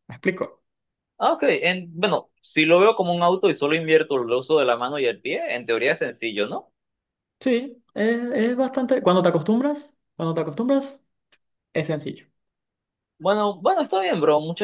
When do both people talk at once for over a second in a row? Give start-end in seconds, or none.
none